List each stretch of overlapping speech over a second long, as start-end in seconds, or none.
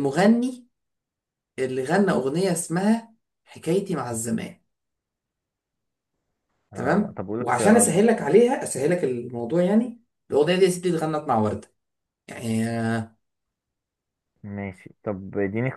6.7-8.1